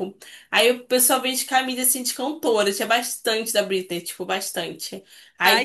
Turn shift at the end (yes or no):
no